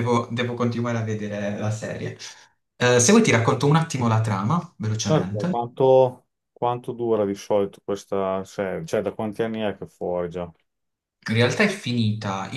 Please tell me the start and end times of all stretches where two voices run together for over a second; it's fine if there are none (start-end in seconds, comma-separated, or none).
none